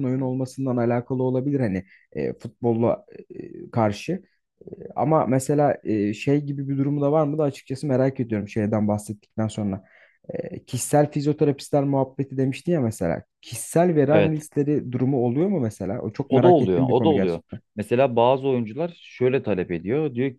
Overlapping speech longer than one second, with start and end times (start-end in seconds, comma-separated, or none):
16.3-17.6